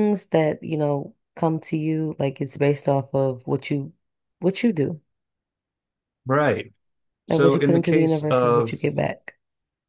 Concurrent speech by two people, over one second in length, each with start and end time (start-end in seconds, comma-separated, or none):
7.3-8.8